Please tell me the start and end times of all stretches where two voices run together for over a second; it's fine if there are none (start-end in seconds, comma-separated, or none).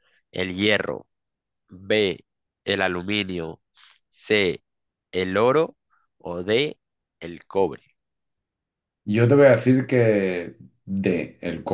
none